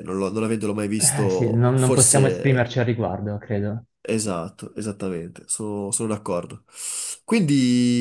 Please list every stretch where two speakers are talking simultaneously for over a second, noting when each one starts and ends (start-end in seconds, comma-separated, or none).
1.0-2.7